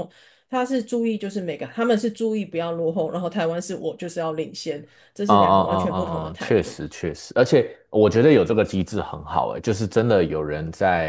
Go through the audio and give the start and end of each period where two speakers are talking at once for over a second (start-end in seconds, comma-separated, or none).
5.3-6.8